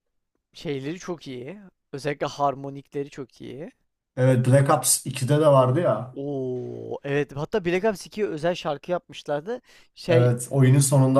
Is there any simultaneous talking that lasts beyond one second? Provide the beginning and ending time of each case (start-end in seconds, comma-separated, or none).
none